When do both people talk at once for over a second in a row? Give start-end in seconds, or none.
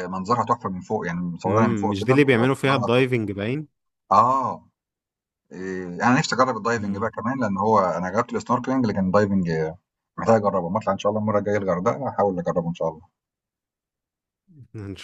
1.5-3.2